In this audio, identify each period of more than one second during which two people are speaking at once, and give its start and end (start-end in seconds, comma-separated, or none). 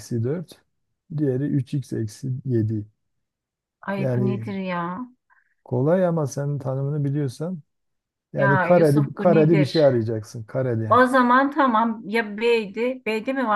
8.3-9.8